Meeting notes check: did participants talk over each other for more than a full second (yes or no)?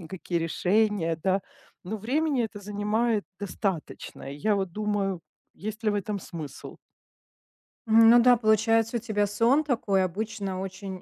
no